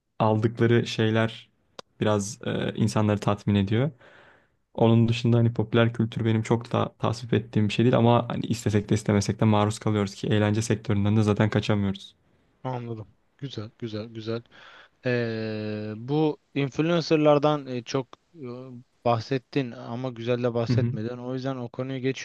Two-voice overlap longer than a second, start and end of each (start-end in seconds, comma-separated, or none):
none